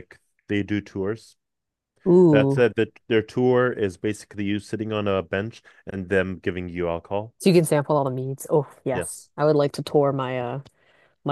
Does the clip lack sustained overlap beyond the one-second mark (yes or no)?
yes